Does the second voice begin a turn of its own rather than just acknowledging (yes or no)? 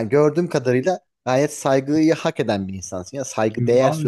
yes